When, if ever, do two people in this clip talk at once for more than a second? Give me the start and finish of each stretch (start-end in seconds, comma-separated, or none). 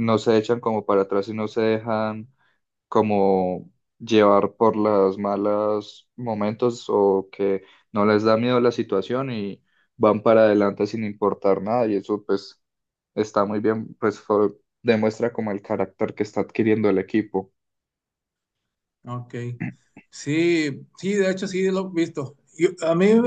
none